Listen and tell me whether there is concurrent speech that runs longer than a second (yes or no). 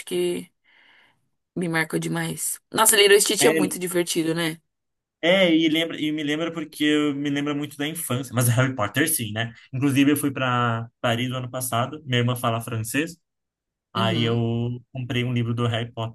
no